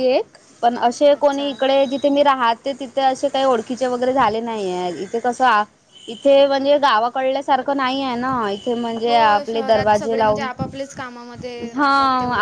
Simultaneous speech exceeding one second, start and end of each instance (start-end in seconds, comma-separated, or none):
9.1-10.5